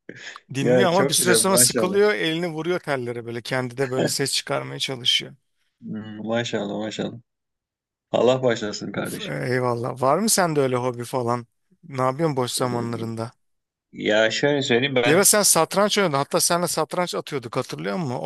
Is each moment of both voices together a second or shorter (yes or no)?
no